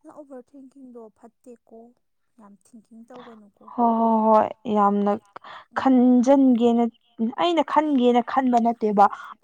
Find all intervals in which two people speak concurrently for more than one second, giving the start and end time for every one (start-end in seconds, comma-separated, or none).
none